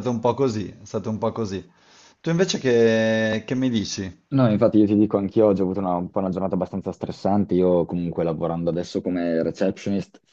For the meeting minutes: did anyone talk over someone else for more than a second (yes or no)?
no